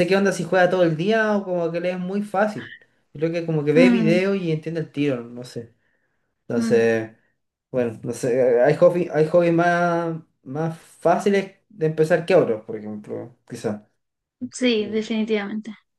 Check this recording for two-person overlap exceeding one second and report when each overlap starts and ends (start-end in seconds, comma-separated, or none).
none